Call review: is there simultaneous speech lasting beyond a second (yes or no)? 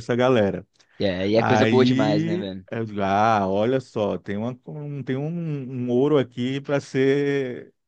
yes